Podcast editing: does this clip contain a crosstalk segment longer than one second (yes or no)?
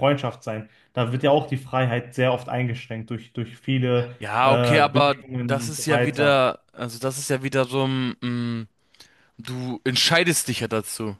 yes